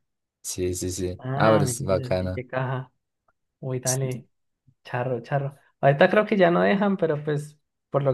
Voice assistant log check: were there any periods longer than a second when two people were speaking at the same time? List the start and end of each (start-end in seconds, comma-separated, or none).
1.2-2.4